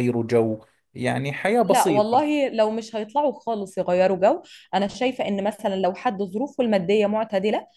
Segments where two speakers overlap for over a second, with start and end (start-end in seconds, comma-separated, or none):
none